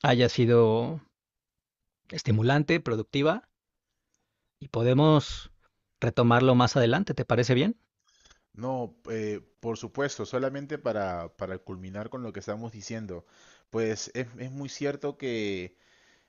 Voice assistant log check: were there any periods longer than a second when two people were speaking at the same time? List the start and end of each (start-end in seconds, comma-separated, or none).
none